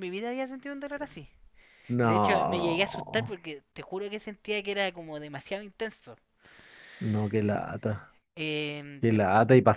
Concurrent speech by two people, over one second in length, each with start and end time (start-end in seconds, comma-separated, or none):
2.0-3.3